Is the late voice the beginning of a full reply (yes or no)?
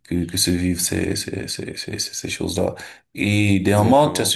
no